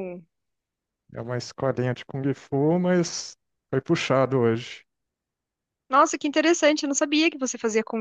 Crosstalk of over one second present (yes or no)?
no